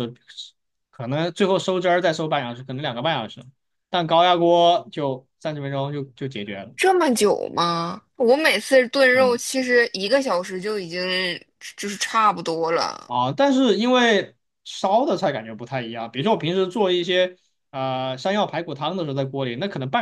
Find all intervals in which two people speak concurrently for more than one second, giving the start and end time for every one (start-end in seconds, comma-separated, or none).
none